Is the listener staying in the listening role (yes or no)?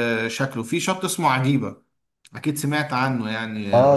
no